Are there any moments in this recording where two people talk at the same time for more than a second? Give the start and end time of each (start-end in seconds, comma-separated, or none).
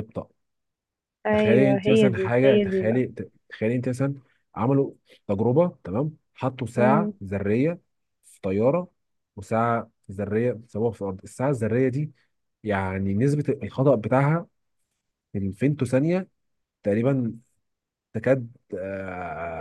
1.3-3.0